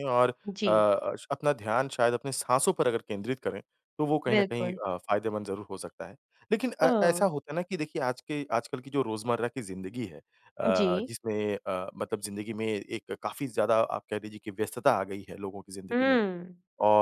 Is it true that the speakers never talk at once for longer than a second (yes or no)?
yes